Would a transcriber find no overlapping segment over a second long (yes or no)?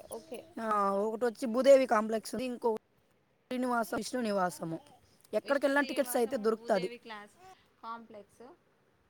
no